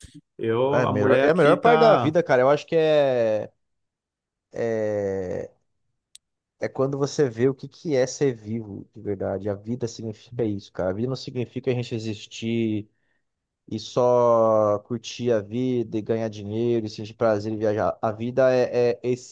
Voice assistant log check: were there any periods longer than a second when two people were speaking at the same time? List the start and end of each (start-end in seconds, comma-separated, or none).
0.7-2.1